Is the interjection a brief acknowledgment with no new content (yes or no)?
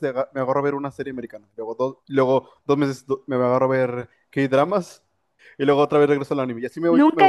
no